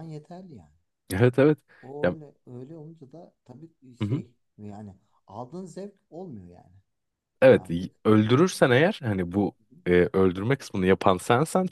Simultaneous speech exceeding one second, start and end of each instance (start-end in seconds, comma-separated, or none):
none